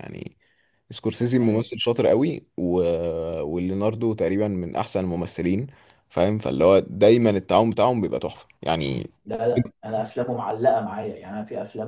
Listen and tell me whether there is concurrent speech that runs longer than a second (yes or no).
no